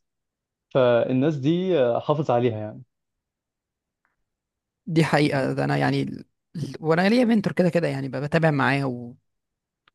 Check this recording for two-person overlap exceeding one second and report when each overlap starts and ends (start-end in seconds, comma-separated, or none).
none